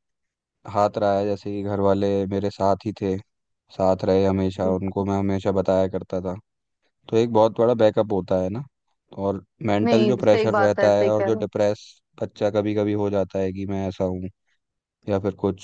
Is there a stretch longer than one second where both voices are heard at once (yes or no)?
yes